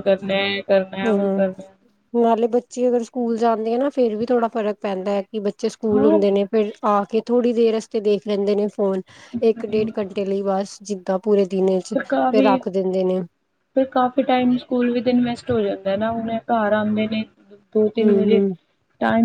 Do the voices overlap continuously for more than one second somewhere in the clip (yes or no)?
no